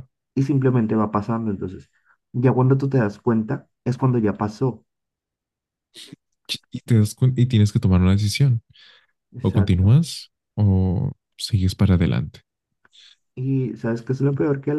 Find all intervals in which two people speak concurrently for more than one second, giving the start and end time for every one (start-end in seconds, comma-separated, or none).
none